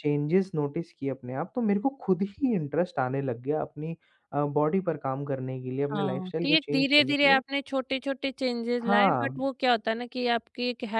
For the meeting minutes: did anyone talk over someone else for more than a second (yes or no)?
yes